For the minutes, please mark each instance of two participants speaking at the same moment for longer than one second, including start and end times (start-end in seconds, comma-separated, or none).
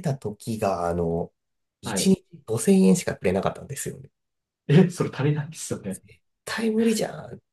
none